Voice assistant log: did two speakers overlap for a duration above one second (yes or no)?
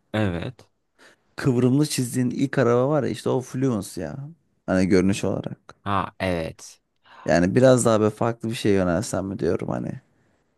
no